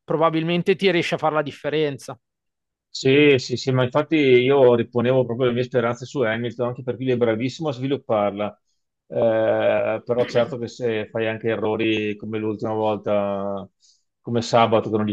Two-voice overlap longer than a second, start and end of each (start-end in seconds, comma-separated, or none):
none